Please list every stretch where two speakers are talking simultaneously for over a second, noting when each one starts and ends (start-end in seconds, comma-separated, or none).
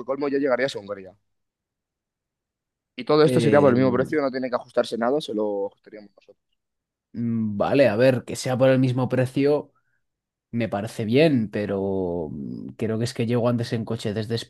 none